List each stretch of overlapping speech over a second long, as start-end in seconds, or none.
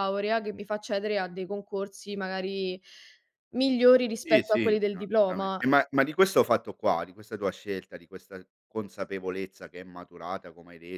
4.2-5.6